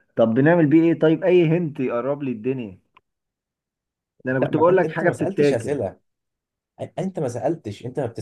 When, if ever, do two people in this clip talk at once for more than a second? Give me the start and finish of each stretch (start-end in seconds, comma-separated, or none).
4.4-5.8